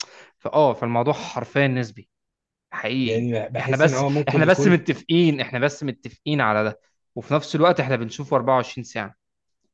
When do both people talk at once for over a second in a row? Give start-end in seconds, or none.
3.0-4.8